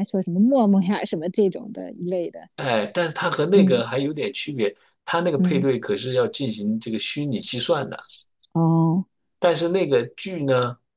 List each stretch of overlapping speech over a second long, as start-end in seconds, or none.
none